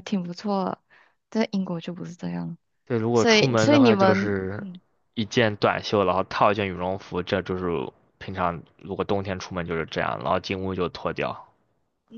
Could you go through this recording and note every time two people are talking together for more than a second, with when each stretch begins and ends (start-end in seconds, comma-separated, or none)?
3.1-4.7